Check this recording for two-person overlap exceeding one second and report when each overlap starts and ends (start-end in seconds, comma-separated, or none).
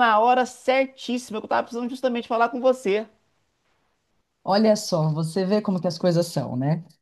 none